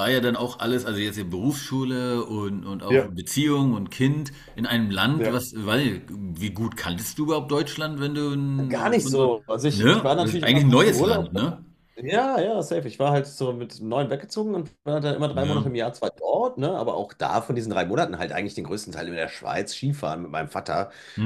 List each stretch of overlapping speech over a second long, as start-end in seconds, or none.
8.7-11.3